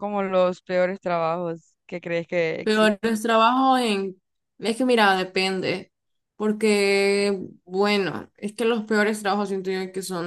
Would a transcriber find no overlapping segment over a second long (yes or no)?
yes